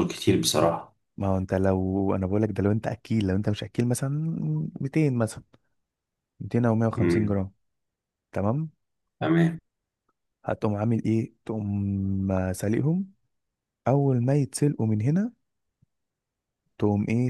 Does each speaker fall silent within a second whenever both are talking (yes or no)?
yes